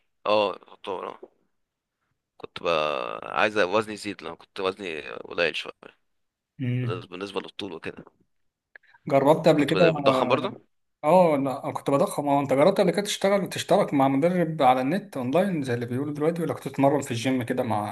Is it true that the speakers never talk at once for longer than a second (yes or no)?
yes